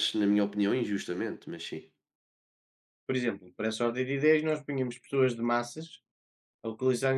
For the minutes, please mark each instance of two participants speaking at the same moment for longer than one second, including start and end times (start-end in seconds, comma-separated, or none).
none